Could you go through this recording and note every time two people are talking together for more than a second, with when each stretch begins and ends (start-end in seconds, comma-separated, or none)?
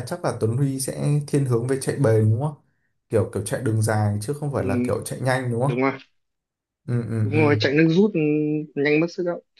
none